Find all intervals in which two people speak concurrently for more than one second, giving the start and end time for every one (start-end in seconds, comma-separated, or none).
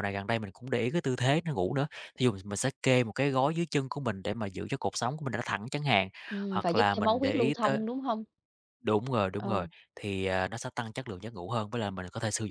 6.5-7.8